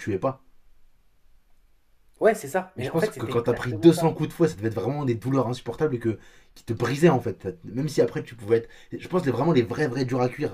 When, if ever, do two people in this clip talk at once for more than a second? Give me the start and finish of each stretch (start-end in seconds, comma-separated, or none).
2.8-4.1